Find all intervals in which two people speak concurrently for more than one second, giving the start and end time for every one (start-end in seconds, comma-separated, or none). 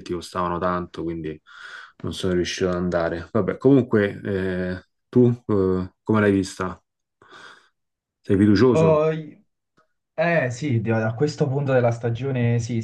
none